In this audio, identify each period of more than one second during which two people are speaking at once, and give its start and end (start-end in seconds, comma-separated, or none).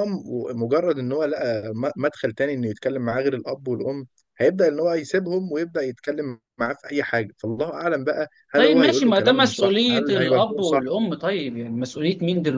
8.6-10.9